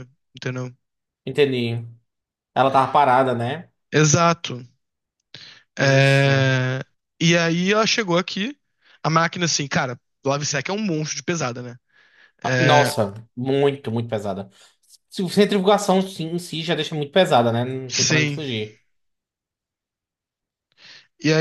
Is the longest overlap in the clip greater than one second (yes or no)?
no